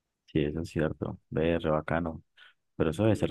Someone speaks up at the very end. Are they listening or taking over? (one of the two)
listening